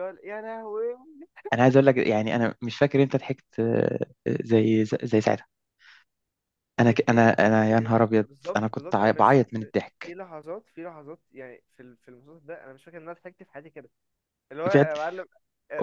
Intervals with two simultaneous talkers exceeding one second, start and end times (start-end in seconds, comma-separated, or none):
7.1-10.2